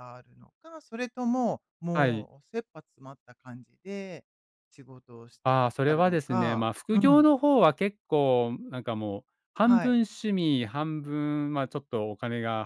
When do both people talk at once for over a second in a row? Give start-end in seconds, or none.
5.5-7.3